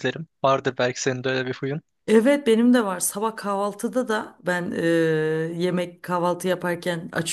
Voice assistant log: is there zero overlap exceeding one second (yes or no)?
yes